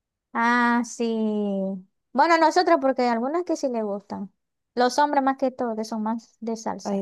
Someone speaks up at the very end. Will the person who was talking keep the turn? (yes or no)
no